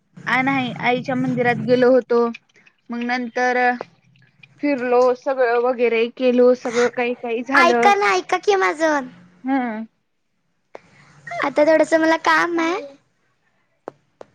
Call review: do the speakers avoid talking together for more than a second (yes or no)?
yes